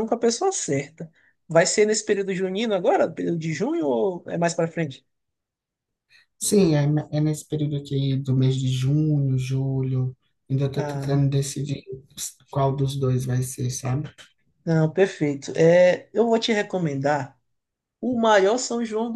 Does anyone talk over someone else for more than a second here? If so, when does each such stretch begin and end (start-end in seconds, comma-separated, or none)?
none